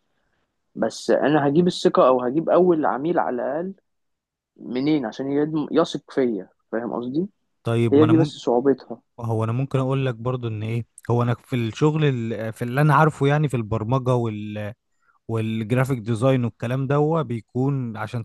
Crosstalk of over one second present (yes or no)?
no